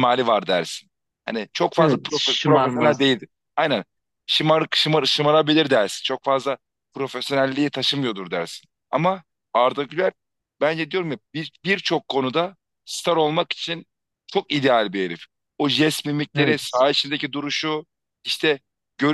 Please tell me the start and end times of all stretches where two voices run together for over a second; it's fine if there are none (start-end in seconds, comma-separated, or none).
1.8-3.1